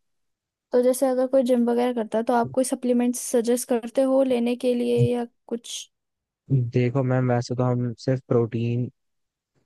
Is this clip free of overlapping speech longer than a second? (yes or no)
yes